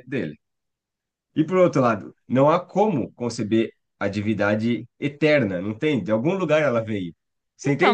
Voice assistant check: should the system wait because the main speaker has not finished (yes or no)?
no